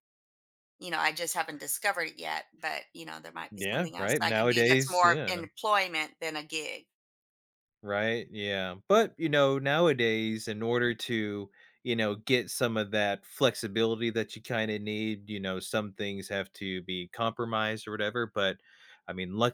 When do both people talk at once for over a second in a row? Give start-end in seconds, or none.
3.5-5.3